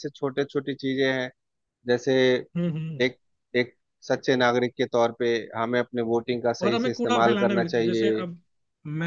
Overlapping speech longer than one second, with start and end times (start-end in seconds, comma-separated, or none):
6.6-8.2